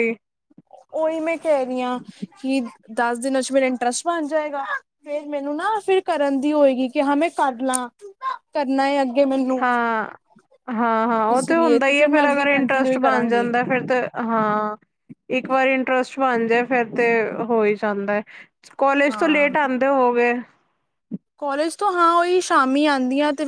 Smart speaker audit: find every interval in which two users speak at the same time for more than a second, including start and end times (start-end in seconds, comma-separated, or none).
11.3-13.5